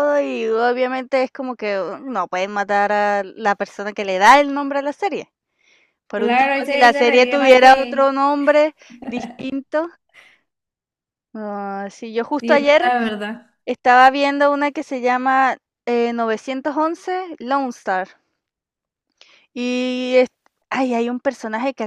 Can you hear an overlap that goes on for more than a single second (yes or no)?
yes